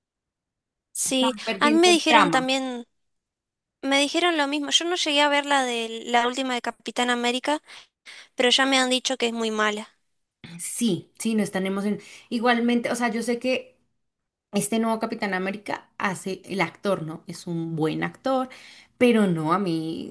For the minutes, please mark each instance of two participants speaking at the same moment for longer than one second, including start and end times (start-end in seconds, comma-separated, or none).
1.0-2.5